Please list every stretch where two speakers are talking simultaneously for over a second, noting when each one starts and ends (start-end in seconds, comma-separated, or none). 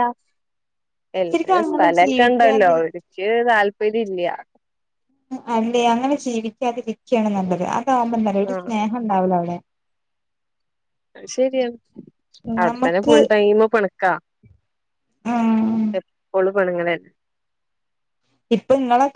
1.3-2.8